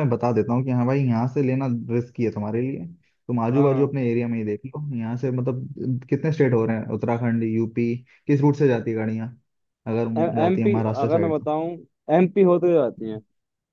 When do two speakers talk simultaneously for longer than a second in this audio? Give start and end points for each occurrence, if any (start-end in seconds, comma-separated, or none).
10.2-11.5